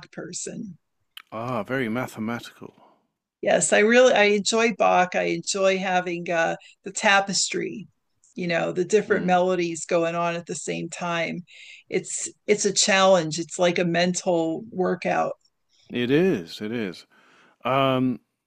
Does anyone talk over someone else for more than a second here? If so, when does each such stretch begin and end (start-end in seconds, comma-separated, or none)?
none